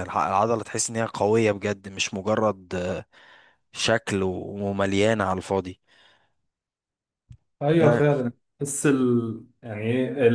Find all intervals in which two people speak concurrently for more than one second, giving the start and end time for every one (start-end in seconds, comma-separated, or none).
none